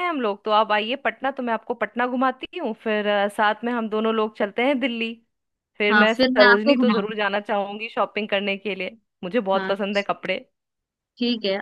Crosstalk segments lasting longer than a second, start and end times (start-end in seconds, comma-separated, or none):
5.9-7.1